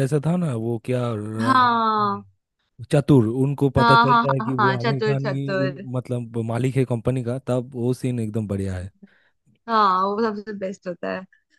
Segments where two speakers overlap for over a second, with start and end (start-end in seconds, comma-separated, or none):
3.8-5.8